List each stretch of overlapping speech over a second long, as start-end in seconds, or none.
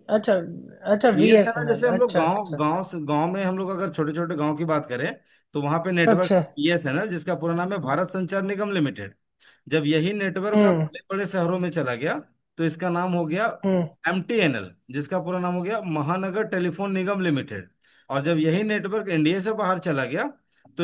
1.1-2.6